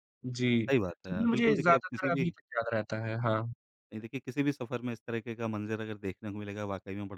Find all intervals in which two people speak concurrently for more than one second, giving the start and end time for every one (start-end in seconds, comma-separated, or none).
0.7-2.3